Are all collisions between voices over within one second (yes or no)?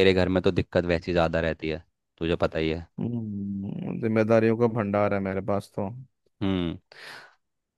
yes